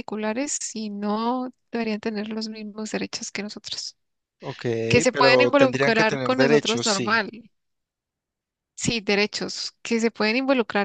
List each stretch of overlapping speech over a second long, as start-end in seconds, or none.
5.1-7.2